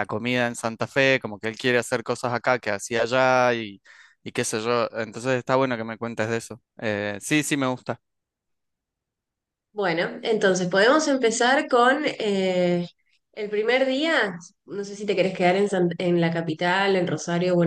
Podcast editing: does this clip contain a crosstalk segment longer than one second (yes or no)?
no